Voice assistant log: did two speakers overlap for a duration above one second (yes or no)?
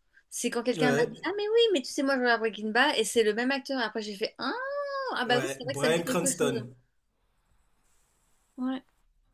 yes